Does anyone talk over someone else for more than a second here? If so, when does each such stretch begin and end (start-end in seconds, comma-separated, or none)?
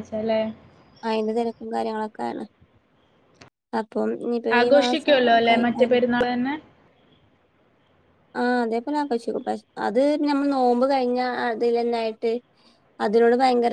none